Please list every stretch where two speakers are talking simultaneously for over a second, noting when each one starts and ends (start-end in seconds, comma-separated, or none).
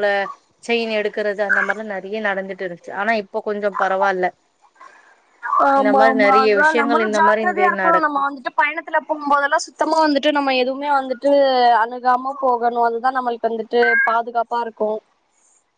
5.8-8.2